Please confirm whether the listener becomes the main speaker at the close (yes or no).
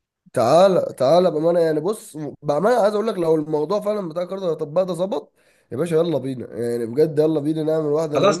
yes